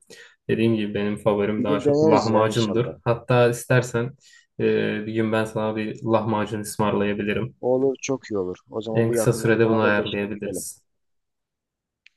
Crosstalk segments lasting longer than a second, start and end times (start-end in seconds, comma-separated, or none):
1.6-3.0, 8.9-10.7